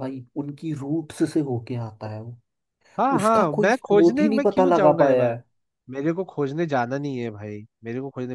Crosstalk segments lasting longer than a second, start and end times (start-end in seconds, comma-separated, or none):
3.2-5.3